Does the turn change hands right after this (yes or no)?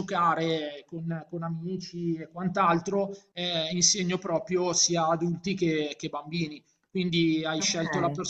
no